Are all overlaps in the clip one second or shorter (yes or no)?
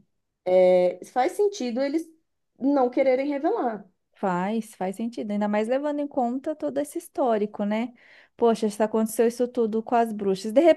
yes